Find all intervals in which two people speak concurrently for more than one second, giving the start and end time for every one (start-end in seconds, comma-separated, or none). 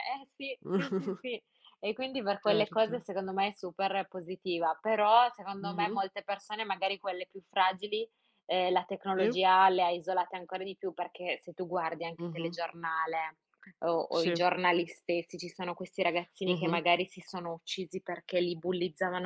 none